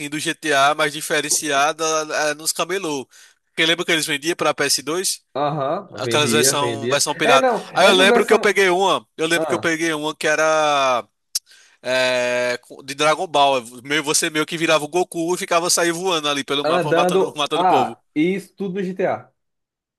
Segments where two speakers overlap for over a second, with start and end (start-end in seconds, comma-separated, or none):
5.9-8.6, 16.6-18.0